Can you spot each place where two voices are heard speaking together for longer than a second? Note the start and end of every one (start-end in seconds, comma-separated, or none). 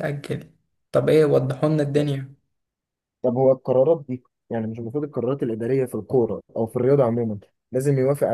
none